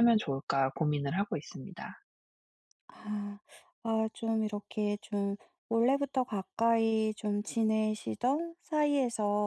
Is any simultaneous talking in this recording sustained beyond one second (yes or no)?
no